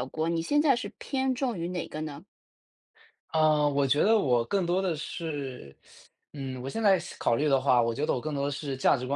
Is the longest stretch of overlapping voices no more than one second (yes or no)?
yes